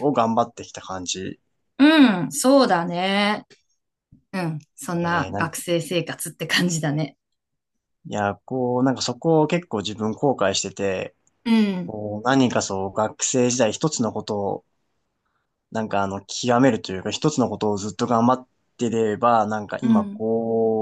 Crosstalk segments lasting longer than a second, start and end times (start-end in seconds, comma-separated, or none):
none